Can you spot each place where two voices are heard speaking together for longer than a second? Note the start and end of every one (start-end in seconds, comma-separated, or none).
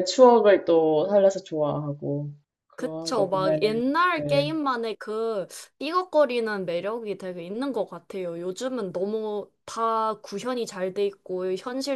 2.7-4.6